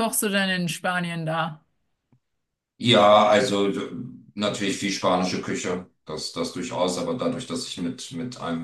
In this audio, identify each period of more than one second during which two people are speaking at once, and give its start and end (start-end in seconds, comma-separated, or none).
none